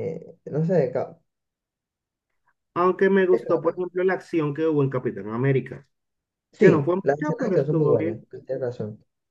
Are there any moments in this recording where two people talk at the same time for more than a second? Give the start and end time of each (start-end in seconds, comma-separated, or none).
6.6-8.2